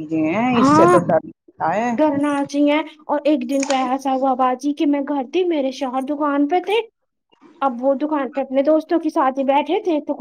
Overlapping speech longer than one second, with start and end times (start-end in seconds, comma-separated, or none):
none